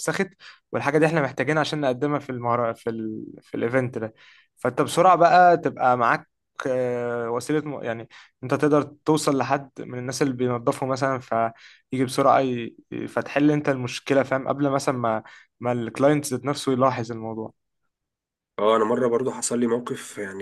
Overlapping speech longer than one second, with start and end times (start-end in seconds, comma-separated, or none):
none